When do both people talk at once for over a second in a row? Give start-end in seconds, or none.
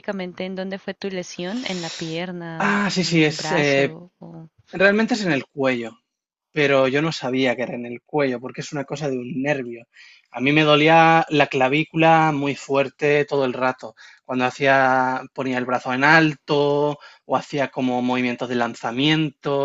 2.6-4.0